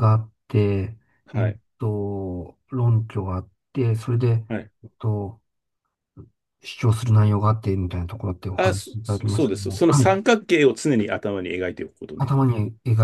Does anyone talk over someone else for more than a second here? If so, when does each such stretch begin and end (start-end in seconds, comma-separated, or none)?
8.6-10.1